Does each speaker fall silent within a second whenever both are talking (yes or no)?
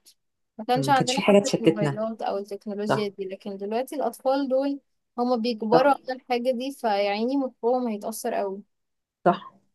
no